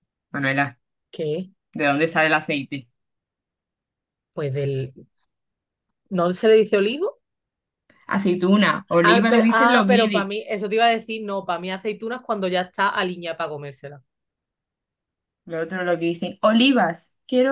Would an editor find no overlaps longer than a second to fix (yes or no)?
no